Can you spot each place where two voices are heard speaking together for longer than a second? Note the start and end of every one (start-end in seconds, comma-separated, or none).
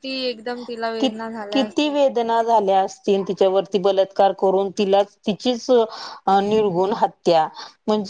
none